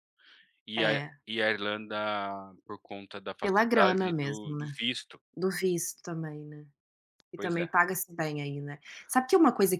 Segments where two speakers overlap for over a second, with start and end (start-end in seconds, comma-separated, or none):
3.4-4.7